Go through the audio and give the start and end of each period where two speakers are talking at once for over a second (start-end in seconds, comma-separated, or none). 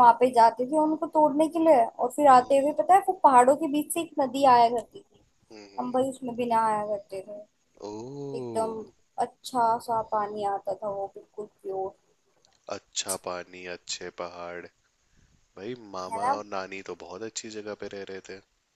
none